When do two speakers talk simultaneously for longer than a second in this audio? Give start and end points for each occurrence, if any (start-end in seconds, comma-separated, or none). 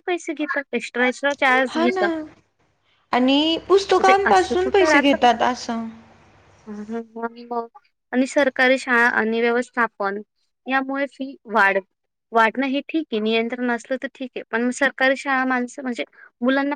4.0-5.4